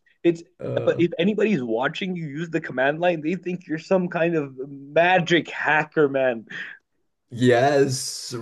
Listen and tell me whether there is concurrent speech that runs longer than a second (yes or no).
no